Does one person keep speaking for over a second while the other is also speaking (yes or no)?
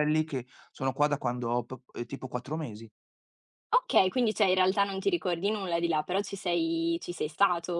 no